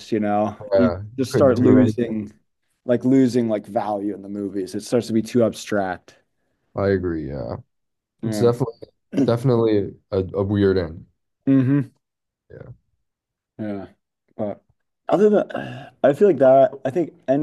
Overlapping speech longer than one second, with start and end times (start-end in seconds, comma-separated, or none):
0.7-2.1